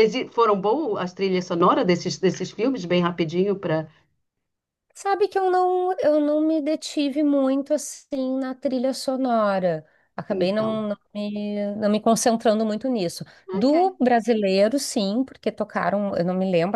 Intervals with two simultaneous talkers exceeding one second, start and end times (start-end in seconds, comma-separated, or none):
none